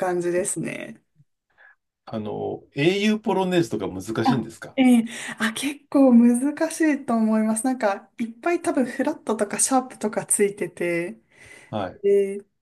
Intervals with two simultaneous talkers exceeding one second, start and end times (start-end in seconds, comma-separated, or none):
none